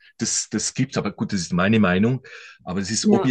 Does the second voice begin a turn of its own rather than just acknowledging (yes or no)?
no